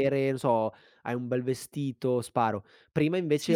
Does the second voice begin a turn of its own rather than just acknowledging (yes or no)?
no